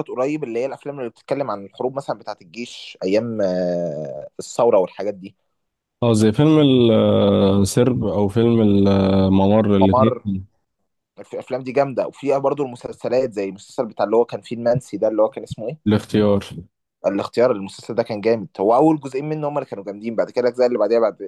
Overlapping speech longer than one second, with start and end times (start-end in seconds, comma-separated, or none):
none